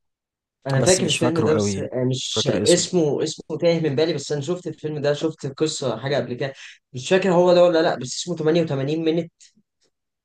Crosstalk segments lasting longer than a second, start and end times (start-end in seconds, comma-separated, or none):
0.8-2.9